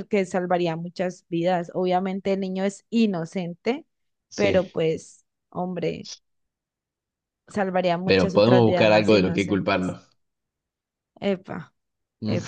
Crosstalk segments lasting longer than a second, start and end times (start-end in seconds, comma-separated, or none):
8.1-9.9